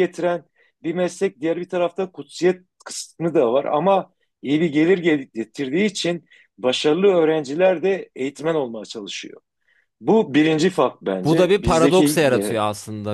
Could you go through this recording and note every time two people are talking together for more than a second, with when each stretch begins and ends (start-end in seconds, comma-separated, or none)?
11.2-12.6